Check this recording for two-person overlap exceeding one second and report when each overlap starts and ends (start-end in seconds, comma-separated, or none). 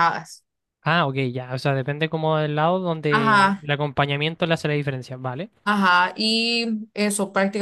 none